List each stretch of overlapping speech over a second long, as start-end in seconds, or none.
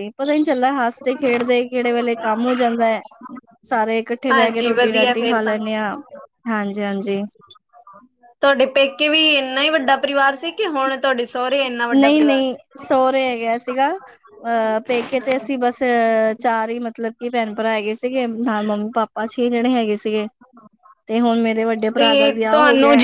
4.3-5.5